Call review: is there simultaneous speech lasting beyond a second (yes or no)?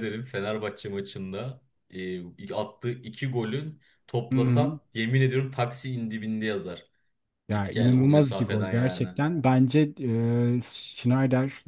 yes